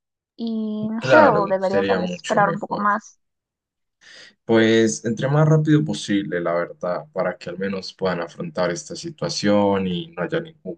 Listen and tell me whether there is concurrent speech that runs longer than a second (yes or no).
yes